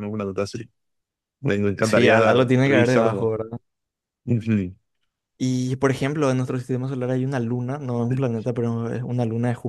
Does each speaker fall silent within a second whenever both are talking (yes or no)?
no